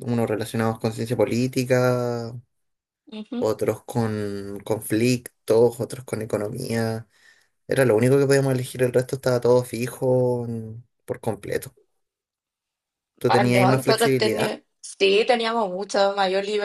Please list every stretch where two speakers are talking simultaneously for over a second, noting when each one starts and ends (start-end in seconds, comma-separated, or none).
13.3-14.6